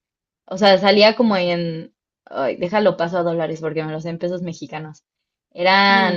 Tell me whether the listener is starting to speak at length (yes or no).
no